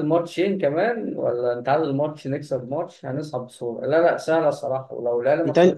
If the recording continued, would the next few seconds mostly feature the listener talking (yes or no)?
no